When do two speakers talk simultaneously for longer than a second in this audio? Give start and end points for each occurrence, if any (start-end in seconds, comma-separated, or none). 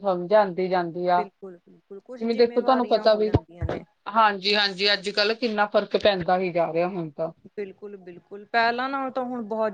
2.2-3.8